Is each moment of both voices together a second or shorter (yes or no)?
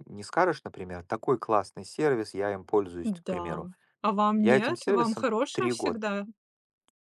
no